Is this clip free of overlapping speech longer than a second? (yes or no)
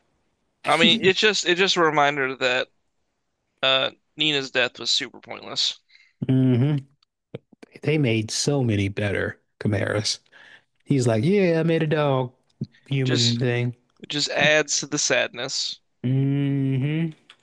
yes